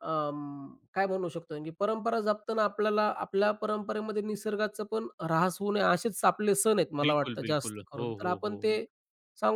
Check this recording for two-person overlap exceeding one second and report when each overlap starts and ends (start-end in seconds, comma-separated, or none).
7.0-8.8